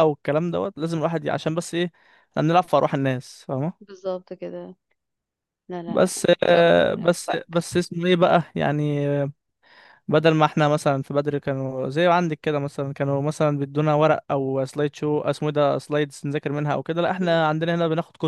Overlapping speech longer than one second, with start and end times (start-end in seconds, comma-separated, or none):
5.9-7.7